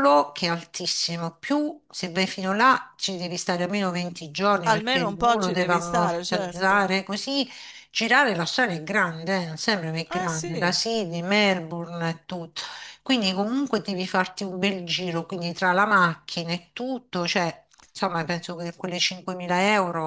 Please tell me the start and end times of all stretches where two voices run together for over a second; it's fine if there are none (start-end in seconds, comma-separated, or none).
4.6-7.0